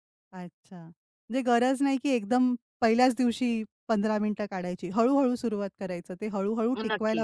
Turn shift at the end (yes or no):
no